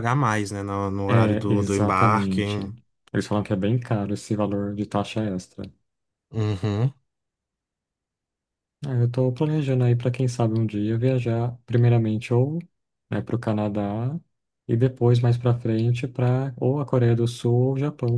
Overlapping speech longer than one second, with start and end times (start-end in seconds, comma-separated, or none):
1.1-2.4